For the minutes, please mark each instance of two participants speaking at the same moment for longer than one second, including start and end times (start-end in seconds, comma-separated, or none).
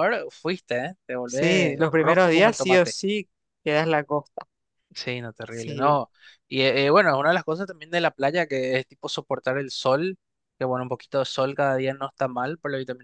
1.2-3.0